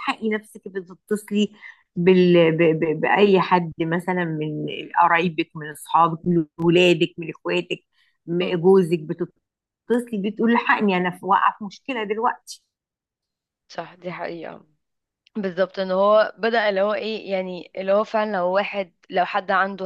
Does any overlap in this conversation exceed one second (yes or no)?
no